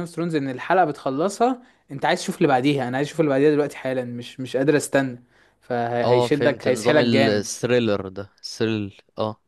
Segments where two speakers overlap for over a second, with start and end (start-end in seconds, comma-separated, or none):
6.0-7.5